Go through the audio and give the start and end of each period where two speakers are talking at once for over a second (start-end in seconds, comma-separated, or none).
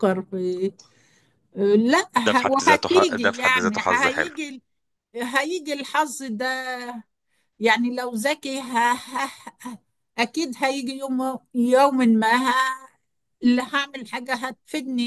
2.2-4.3